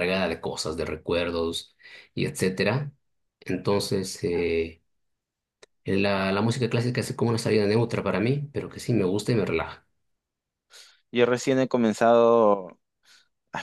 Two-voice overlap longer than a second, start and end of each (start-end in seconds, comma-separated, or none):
none